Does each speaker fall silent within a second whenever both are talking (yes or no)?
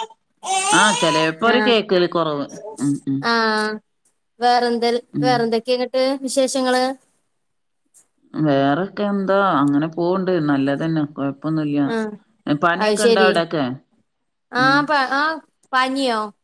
yes